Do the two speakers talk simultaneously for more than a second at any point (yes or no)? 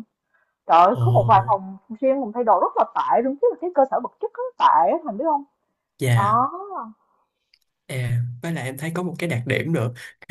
no